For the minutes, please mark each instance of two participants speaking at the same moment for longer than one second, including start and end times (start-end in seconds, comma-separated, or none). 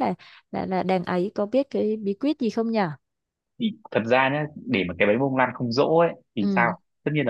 none